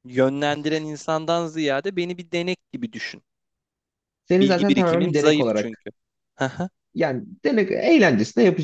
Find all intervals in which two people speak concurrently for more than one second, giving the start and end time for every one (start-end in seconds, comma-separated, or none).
4.3-5.8